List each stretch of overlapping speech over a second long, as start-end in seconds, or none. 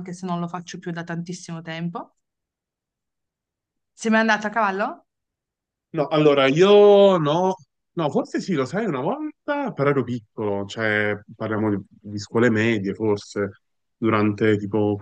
none